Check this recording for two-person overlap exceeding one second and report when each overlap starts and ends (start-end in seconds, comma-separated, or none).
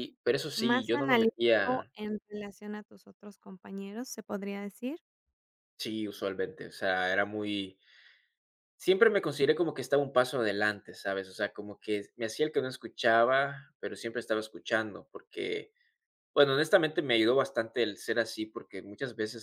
0.6-1.9